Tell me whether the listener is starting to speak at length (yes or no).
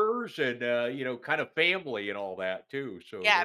yes